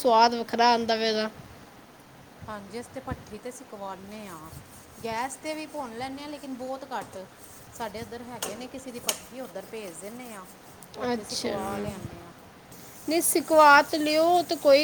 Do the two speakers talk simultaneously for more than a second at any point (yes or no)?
no